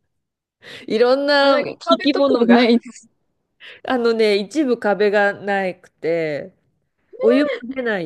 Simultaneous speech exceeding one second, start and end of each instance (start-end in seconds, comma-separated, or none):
1.4-2.8